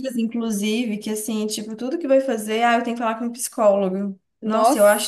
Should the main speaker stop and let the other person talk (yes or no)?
no